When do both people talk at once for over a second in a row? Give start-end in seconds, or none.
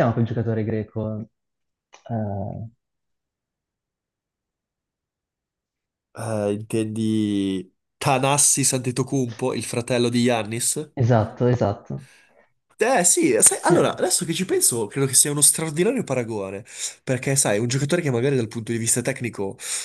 none